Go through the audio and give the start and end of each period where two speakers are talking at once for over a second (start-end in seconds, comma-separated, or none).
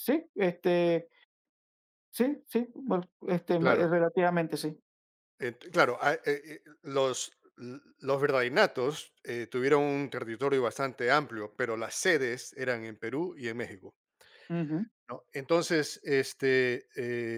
none